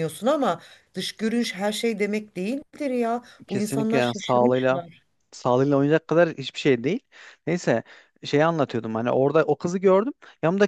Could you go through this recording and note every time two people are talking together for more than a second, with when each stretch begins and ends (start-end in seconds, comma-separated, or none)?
3.5-4.8